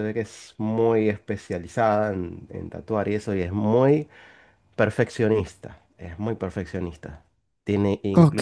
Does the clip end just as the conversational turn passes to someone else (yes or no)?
no